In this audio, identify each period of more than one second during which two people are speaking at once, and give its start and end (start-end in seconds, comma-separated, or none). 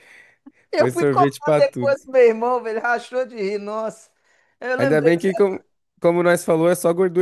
0.7-2.0